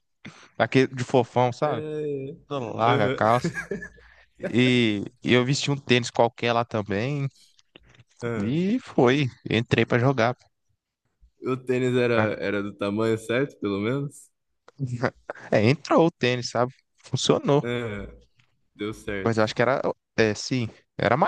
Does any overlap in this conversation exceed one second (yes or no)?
no